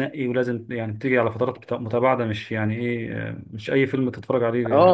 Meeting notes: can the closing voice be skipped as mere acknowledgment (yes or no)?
no